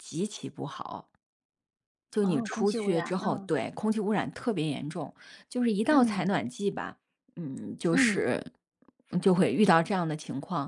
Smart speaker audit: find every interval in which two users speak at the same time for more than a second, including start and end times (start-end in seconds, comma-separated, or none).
2.2-3.5